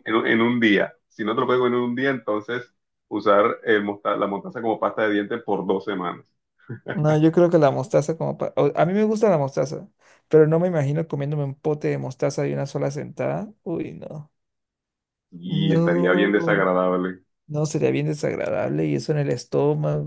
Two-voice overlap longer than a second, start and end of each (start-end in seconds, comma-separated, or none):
15.4-16.7